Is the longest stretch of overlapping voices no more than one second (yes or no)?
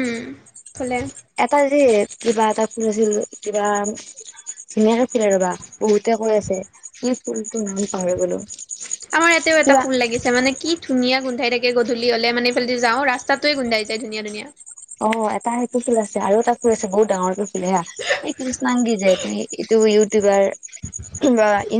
yes